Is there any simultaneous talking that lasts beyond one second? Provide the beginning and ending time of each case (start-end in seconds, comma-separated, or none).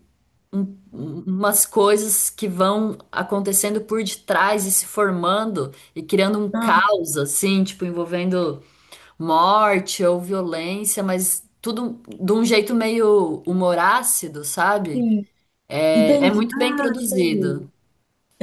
15.9-17.7